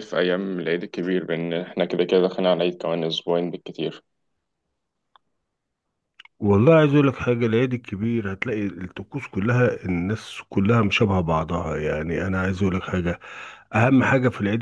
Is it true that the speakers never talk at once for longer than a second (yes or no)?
yes